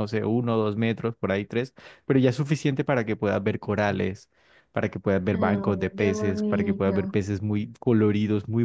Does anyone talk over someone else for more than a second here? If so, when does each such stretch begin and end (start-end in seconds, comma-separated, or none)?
5.3-7.0